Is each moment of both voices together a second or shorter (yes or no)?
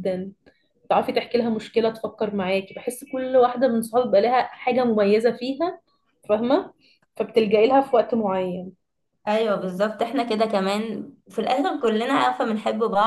yes